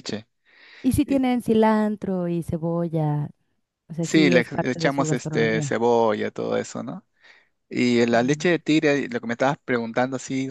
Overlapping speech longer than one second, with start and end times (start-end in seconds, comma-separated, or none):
4.0-5.8